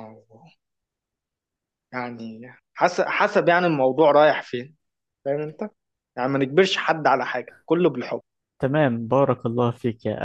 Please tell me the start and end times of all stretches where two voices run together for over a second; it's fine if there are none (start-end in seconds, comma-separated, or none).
none